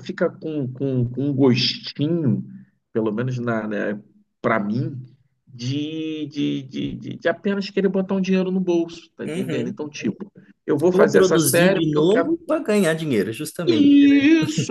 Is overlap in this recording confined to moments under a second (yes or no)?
no